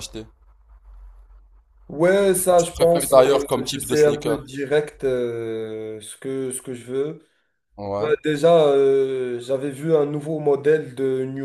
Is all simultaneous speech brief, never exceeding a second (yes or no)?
no